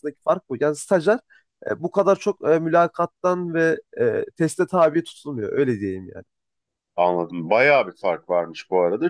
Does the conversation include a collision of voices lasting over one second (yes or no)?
no